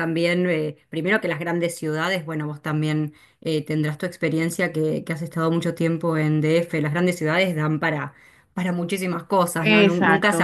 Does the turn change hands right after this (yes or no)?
yes